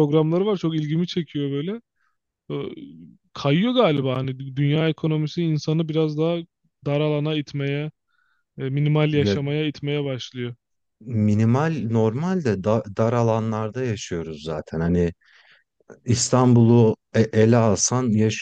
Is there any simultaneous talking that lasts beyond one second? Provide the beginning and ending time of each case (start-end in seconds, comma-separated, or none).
none